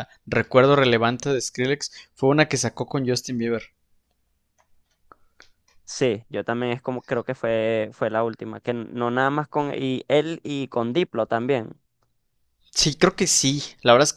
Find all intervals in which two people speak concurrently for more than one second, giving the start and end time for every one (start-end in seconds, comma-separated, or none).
none